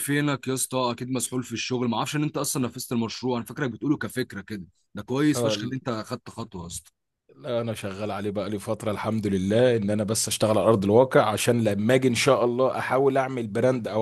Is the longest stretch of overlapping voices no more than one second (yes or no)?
yes